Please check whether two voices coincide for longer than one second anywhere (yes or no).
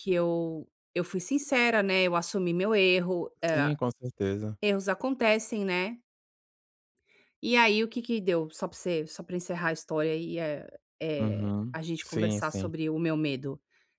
yes